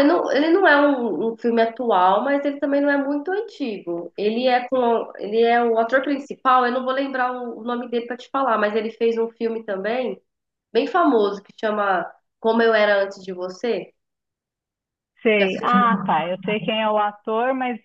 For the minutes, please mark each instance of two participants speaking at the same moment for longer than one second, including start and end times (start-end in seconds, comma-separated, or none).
none